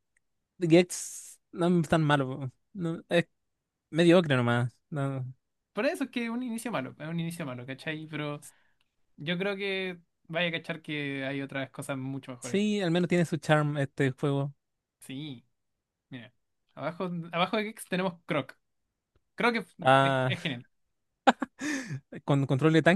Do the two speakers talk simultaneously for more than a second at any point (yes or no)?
no